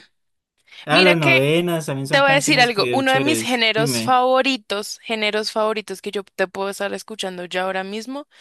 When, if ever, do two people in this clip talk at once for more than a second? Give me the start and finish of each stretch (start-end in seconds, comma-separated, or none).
2.1-4.2